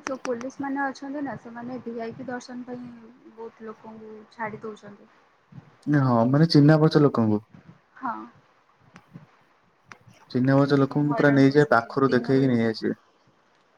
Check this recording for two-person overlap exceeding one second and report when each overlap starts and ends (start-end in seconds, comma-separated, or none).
10.6-12.6